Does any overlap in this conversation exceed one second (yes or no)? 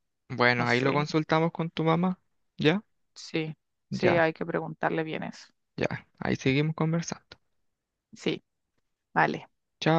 no